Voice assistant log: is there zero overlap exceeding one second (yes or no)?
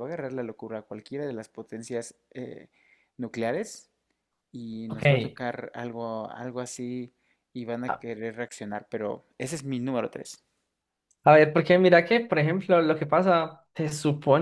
yes